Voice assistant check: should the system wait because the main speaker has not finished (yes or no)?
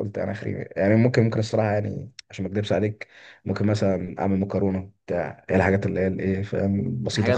yes